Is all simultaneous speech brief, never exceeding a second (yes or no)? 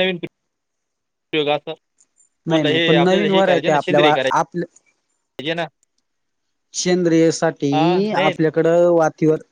no